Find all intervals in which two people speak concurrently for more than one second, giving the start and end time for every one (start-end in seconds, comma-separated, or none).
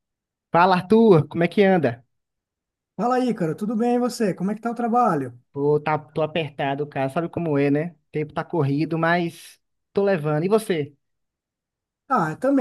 none